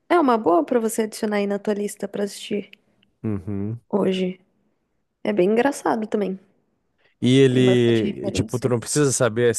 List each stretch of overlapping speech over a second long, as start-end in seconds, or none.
7.5-8.7